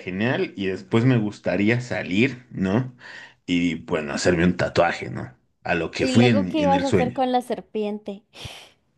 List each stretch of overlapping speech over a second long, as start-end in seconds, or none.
6.0-7.2